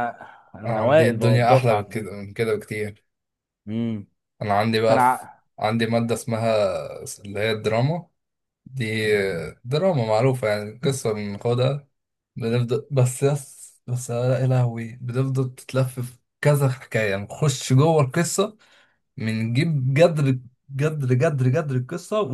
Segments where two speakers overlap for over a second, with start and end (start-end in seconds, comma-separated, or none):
0.7-2.1